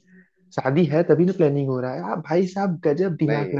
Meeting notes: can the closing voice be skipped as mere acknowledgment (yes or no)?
yes